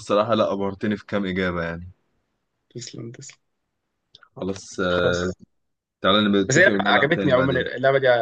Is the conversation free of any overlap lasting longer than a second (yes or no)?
no